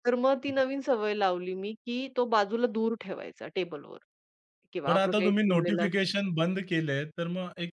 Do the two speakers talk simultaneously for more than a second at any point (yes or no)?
yes